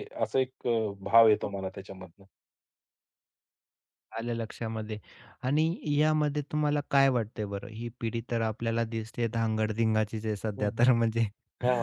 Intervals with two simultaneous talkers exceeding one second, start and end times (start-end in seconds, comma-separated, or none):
none